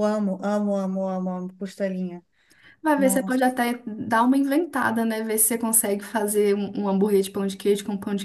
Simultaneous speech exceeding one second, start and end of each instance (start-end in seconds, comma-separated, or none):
none